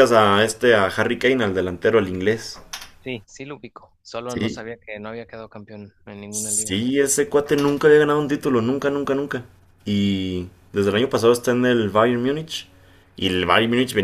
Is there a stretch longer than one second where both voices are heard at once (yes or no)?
no